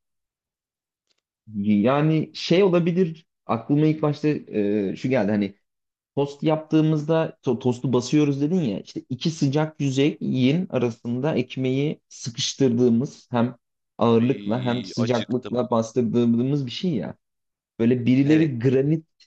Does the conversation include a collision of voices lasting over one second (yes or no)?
yes